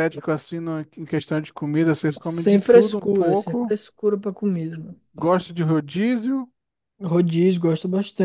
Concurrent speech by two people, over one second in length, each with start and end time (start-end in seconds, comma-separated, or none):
2.2-3.8